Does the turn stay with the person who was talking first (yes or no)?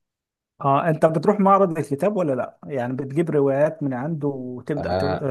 no